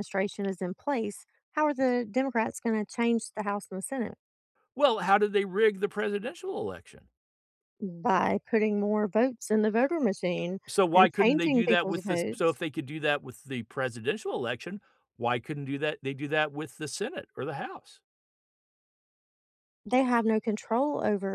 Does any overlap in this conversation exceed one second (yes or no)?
yes